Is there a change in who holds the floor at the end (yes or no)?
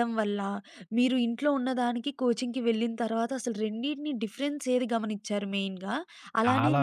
no